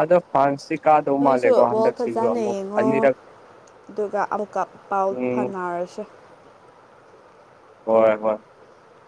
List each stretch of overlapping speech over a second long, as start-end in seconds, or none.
1.2-3.1